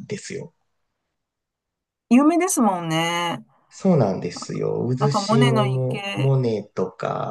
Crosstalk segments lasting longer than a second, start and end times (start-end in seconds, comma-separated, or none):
5.0-6.3